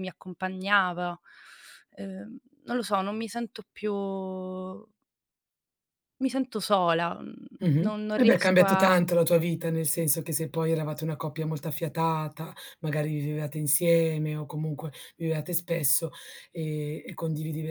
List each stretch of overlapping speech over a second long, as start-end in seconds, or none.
7.8-9.0